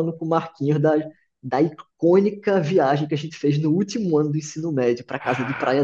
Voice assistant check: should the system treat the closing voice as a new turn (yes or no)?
yes